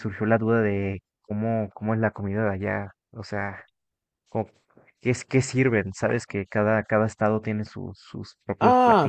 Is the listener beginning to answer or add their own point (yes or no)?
yes